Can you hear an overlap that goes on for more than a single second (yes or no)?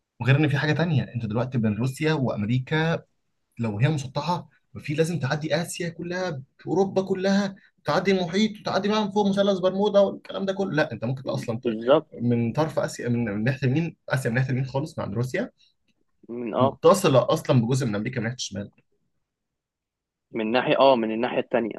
no